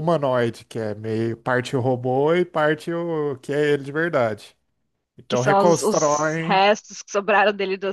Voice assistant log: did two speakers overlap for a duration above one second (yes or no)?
yes